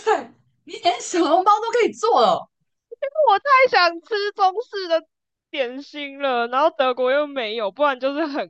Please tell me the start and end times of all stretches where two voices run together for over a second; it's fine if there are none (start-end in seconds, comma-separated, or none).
none